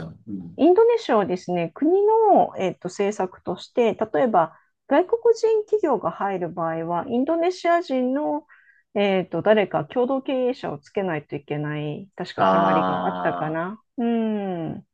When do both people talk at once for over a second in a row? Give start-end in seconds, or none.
12.4-13.6